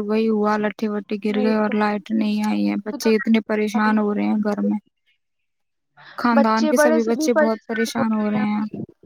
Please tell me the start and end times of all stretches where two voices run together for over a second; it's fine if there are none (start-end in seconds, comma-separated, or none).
2.9-4.5